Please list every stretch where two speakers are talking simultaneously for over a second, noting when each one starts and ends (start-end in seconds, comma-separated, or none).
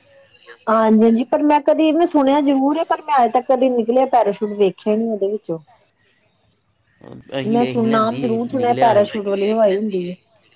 7.5-9.1